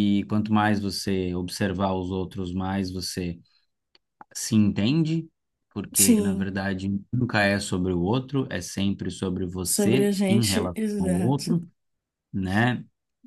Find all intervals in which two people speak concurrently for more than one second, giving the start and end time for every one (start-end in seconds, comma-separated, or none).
9.6-11.6